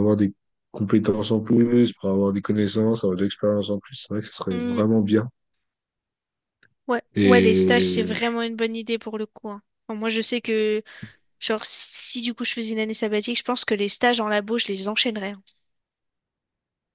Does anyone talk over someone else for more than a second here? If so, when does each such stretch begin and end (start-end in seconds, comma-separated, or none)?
7.1-8.4